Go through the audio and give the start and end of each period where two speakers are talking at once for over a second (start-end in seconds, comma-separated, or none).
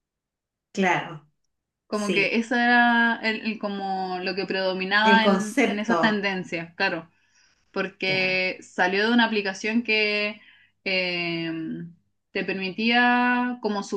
5.0-6.3